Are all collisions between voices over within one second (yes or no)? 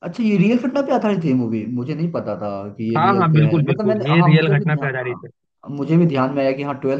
no